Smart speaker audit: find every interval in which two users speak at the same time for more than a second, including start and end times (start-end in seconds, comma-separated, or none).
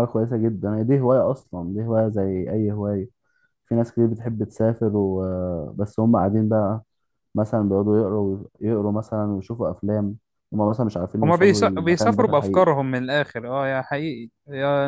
11.2-12.7